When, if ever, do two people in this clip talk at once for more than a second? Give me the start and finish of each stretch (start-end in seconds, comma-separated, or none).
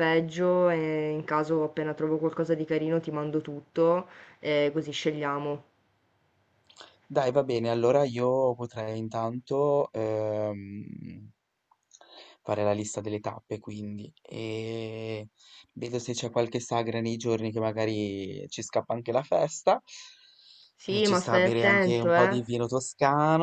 20.9-22.4